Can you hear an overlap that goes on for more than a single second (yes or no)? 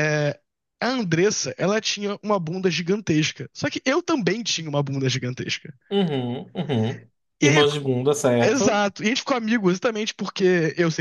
no